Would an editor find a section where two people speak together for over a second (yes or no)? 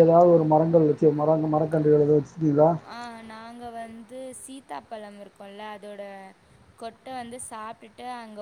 no